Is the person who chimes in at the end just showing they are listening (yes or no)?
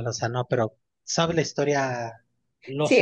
no